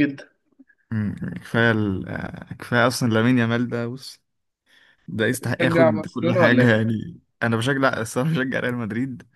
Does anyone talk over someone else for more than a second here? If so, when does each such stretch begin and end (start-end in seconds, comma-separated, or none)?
5.6-6.8